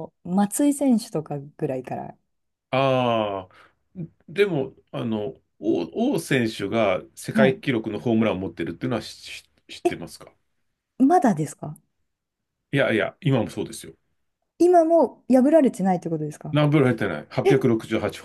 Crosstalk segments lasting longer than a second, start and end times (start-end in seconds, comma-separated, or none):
none